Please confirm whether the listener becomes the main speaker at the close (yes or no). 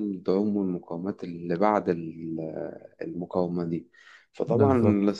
no